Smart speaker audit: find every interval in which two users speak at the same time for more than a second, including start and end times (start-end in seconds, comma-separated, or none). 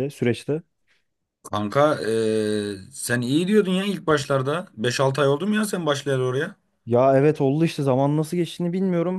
none